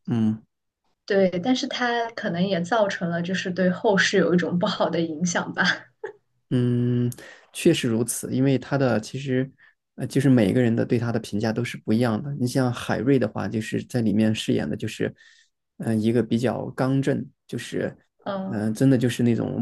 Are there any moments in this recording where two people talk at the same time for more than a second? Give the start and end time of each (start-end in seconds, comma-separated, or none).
none